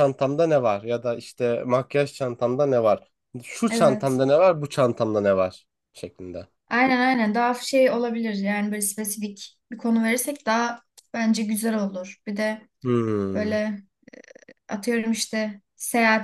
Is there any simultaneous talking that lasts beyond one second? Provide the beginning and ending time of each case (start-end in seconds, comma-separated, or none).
none